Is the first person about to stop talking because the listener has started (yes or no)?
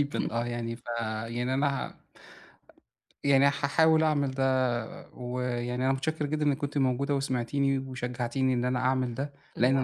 no